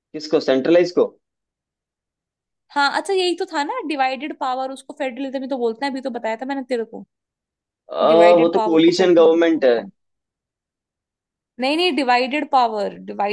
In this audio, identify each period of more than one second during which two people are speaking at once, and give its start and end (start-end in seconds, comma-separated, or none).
8.4-9.7